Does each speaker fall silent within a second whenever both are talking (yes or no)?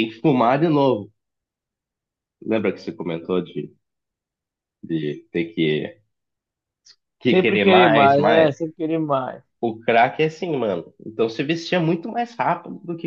no